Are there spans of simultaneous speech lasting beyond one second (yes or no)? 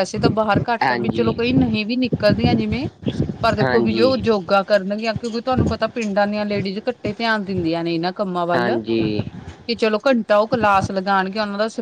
no